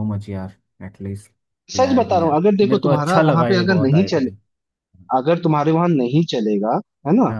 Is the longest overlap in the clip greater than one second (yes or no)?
yes